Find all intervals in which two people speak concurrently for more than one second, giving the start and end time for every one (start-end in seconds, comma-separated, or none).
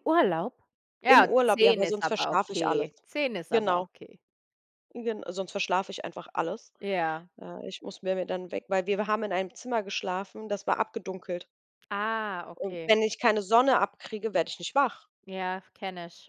1.1-2.9